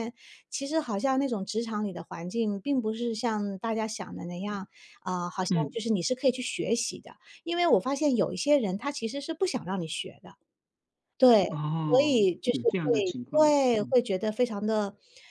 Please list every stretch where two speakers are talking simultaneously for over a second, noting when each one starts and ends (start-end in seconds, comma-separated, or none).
11.9-14.0